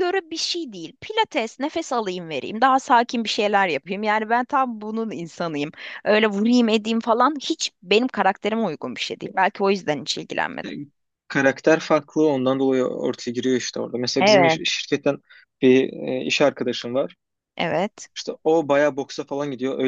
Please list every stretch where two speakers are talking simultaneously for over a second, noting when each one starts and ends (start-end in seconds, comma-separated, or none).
none